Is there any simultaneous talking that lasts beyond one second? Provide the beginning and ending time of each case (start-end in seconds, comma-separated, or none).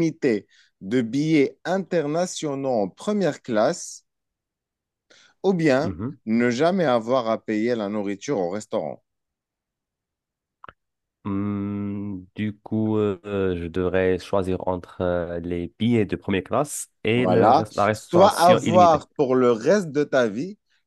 17.1-19.0